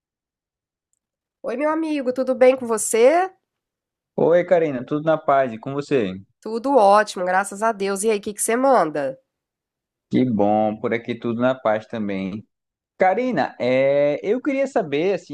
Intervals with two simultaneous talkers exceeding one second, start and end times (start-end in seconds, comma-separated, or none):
none